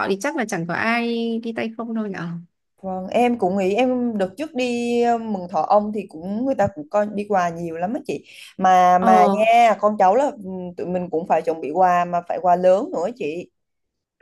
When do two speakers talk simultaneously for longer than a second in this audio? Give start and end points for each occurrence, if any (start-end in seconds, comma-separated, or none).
none